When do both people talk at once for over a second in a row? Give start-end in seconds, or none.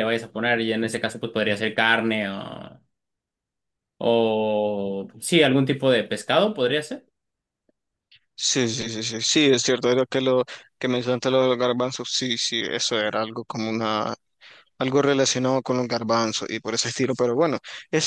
none